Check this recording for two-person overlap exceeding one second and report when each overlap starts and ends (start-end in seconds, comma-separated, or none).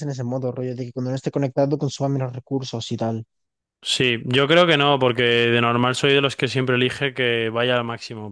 none